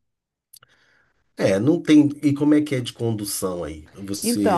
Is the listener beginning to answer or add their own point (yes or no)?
yes